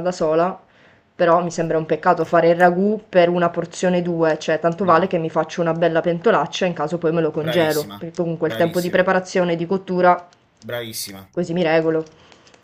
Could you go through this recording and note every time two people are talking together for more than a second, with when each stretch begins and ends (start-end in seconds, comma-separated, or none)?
7.4-9.1